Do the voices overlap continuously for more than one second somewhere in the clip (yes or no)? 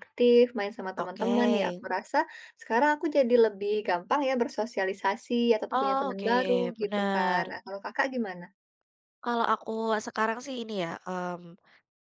yes